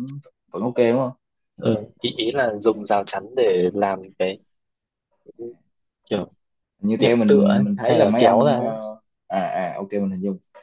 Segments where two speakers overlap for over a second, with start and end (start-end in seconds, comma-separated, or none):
7.0-8.7